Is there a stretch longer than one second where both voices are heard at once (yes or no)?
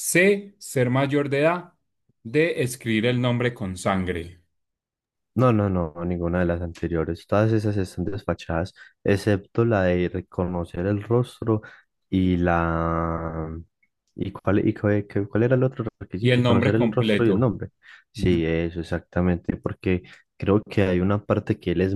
yes